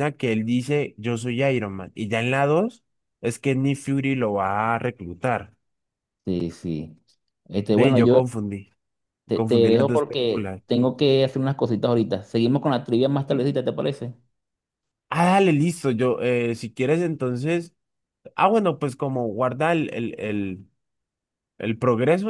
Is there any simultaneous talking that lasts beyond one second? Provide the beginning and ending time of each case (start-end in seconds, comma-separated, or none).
9.3-10.6